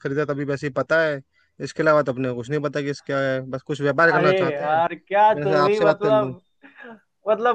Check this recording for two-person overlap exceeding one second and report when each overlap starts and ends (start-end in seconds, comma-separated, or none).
4.2-6.3